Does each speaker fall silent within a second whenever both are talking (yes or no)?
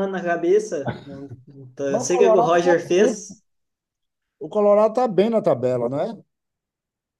no